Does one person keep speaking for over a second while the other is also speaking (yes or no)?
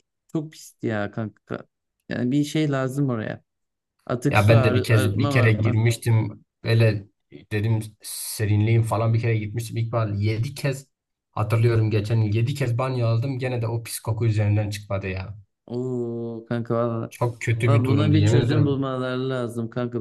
yes